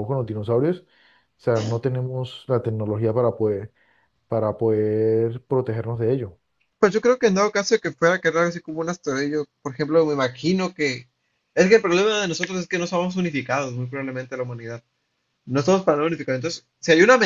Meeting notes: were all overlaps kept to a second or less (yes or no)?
yes